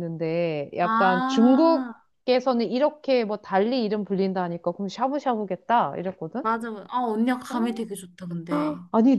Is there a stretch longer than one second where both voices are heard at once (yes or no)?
yes